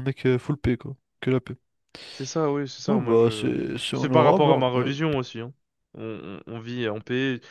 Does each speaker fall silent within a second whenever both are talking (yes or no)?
no